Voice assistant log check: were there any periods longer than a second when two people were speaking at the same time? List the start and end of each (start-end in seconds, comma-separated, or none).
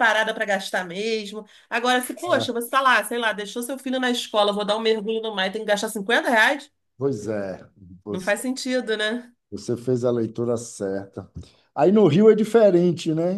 none